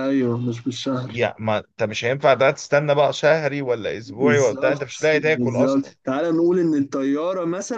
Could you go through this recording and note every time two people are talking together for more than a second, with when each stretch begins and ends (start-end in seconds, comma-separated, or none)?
4.0-5.9